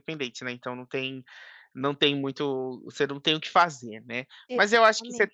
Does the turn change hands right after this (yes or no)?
no